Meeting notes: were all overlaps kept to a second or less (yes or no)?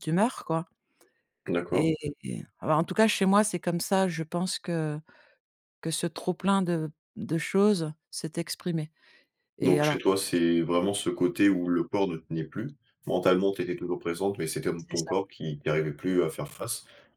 yes